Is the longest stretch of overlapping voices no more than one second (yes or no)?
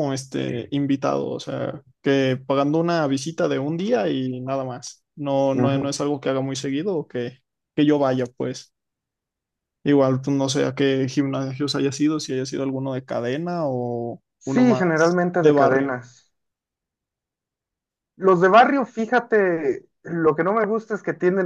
no